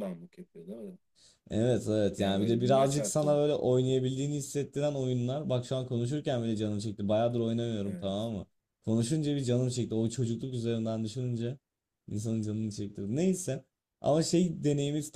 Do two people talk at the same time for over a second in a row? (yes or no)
yes